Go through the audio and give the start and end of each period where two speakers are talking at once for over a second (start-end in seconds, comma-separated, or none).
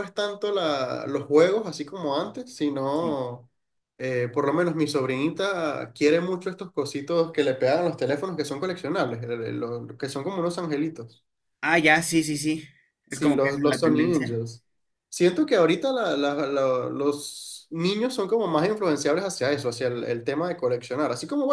13.1-14.4